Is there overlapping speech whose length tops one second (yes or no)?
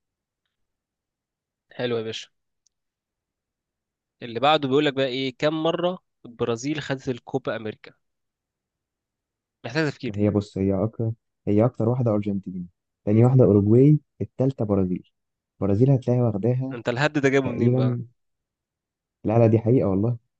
no